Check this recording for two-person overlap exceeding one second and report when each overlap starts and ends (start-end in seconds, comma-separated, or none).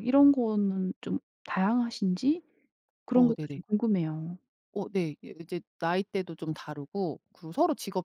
none